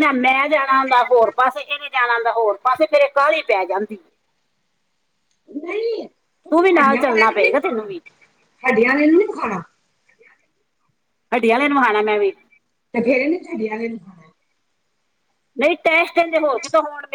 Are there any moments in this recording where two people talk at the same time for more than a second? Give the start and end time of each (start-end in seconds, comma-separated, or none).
6.5-7.9